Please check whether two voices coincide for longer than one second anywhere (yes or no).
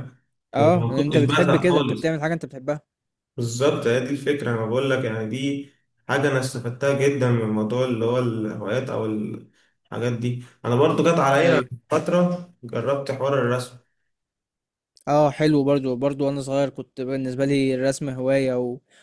yes